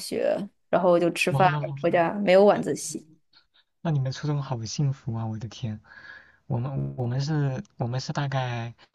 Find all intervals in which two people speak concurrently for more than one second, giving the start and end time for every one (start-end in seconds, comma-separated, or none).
none